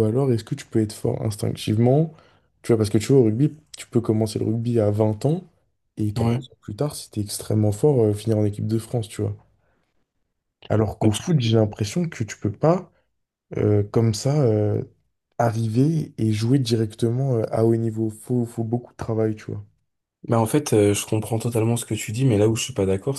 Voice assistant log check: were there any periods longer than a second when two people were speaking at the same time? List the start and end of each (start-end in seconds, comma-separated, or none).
none